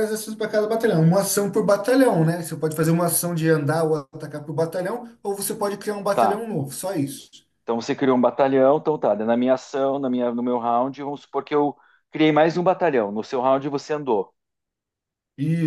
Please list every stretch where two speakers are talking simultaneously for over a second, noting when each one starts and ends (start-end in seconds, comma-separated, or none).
none